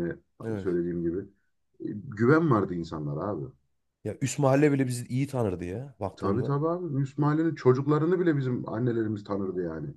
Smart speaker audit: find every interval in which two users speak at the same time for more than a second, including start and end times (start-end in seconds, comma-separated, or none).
none